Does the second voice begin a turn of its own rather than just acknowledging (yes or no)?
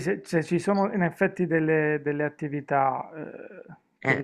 no